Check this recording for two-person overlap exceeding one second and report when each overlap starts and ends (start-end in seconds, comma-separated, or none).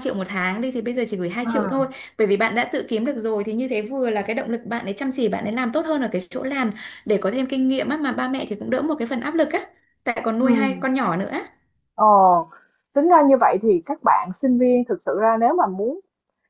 none